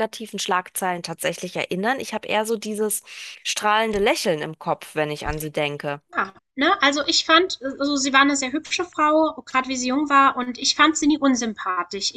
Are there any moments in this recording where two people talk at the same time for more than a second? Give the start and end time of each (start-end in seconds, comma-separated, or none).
none